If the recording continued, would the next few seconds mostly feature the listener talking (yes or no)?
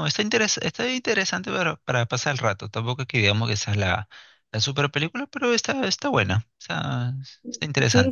yes